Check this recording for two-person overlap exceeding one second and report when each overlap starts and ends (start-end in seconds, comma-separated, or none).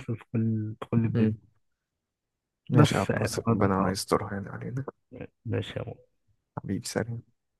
2.7-4.0